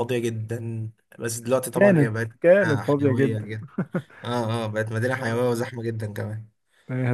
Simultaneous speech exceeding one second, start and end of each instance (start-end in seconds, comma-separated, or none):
1.7-3.5